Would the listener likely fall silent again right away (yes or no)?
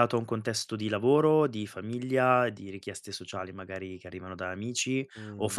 yes